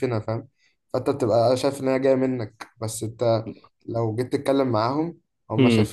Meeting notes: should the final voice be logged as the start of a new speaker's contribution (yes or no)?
no